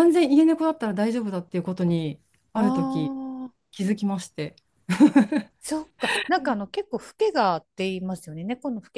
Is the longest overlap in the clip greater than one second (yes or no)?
no